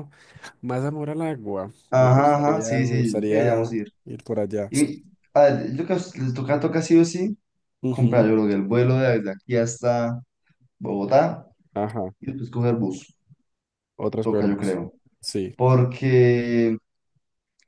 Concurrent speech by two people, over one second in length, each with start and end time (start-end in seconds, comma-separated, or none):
1.9-3.9